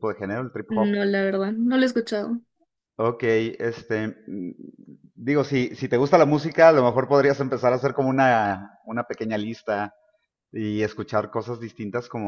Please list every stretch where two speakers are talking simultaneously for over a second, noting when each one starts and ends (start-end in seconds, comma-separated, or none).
none